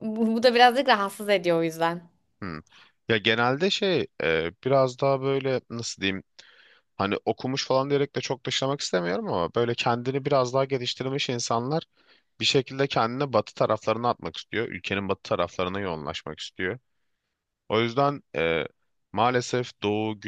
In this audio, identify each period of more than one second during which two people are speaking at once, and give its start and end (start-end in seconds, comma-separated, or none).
none